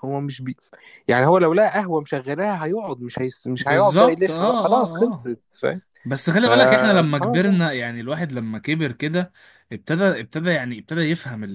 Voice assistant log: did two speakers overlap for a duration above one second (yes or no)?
yes